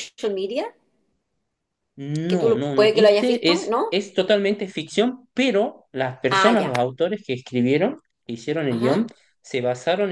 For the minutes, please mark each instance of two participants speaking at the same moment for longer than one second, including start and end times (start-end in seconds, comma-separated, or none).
2.3-4.0